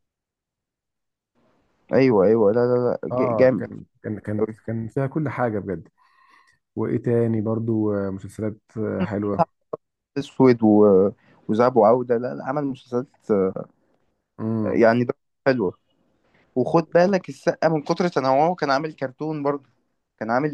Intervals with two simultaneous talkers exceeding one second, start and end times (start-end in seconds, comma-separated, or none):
none